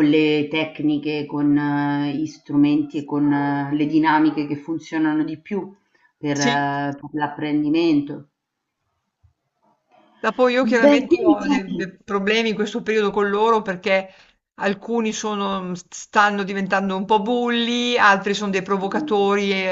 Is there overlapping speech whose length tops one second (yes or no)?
yes